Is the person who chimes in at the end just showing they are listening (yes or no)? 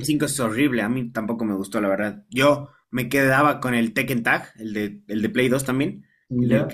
yes